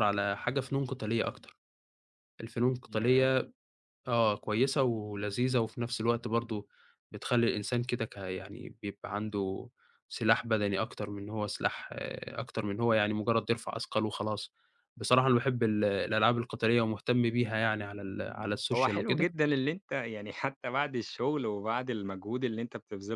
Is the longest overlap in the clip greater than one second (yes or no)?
no